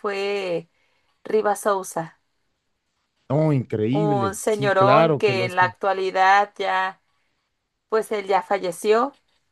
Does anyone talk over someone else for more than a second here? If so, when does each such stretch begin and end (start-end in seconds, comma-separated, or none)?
3.9-5.6